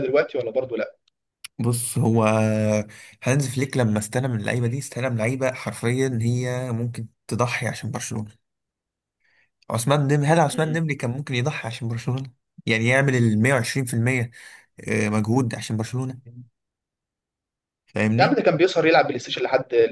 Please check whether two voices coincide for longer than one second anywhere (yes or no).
no